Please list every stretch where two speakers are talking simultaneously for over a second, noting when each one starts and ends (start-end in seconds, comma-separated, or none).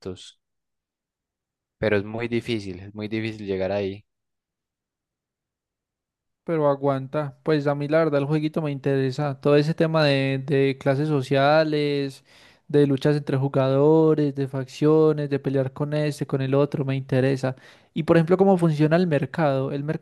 none